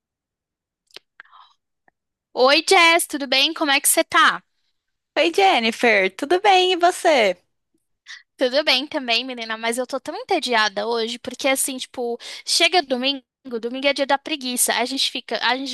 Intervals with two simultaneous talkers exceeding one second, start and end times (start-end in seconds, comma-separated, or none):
none